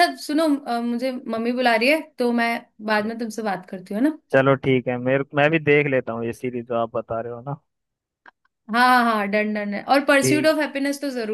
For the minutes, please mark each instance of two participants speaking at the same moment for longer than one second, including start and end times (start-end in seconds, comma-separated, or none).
none